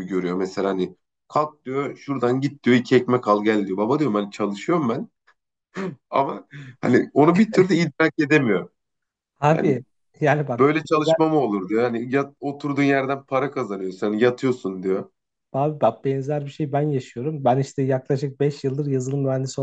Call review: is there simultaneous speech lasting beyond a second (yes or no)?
no